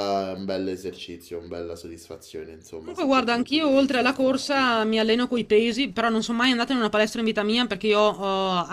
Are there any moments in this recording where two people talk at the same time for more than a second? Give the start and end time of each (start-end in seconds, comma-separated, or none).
2.8-4.7